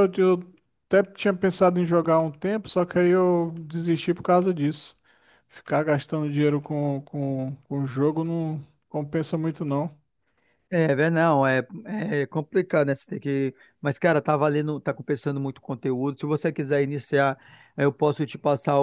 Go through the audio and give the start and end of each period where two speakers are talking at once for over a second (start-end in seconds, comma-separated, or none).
none